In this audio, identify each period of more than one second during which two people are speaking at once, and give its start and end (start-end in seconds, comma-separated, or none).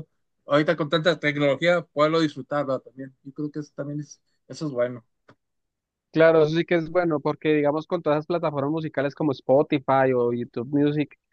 none